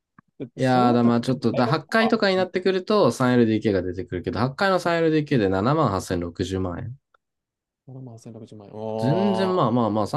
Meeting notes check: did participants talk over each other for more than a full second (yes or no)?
yes